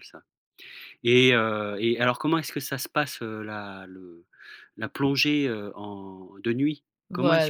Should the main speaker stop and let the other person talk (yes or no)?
no